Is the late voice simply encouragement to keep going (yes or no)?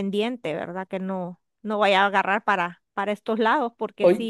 no